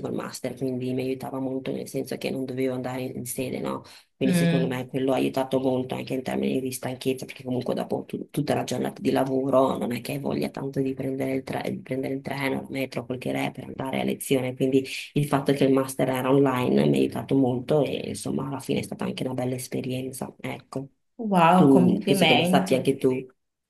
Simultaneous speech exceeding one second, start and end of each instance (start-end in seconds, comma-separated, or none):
21.5-22.8